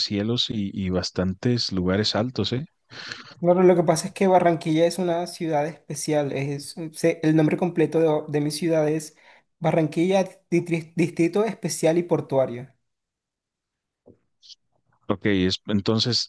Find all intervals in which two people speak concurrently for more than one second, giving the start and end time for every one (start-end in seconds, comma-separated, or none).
none